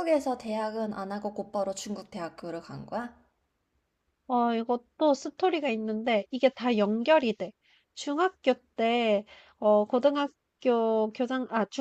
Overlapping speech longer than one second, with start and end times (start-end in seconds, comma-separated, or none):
none